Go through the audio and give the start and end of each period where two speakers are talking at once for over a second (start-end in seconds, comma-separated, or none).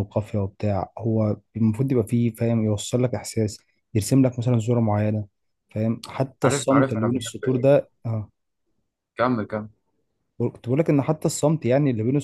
6.4-7.7